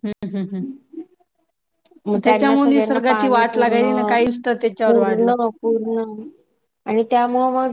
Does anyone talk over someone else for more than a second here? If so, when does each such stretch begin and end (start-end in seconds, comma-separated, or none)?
2.2-3.8